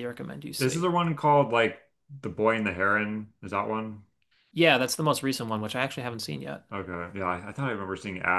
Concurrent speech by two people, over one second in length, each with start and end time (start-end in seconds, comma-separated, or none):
none